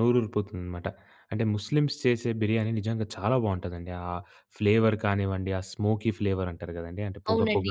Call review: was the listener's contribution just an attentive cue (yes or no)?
no